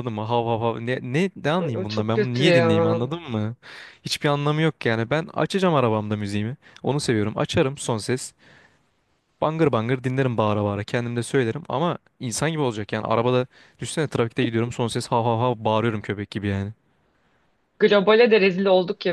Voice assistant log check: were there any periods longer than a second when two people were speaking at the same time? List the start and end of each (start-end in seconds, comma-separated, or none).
1.6-3.0